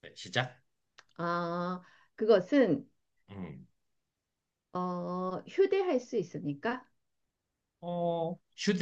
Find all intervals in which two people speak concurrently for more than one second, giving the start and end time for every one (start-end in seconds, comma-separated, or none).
none